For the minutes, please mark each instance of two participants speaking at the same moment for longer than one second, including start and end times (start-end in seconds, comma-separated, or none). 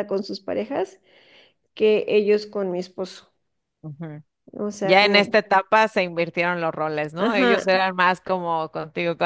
none